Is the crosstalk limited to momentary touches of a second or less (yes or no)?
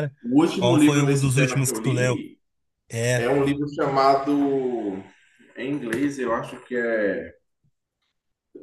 no